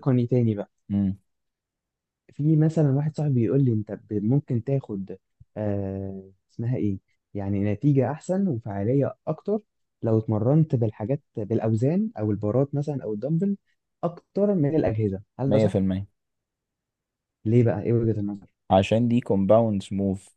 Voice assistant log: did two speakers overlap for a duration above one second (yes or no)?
no